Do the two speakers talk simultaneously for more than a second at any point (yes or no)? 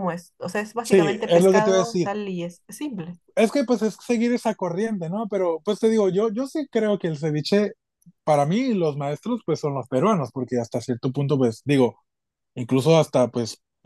yes